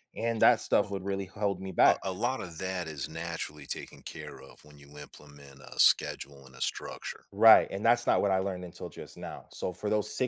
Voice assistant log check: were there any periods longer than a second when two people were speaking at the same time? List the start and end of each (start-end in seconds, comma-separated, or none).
none